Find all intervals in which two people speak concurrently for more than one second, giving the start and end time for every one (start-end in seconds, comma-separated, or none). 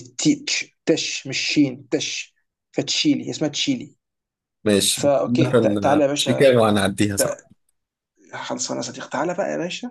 4.9-6.5